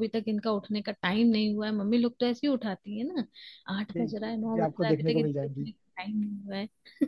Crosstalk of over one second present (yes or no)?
yes